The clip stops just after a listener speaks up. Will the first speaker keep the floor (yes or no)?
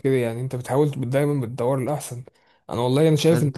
yes